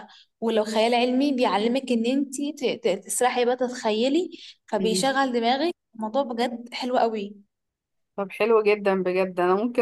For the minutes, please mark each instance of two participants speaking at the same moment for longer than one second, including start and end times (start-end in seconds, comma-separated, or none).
none